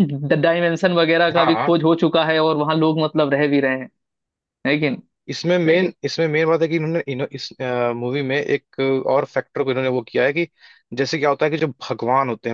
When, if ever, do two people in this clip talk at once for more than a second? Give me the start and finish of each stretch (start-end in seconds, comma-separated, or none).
none